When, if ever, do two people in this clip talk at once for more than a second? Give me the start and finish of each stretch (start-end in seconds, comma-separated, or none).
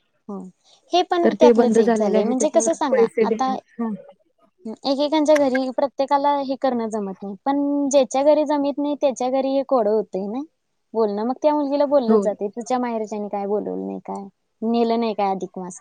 1.2-3.5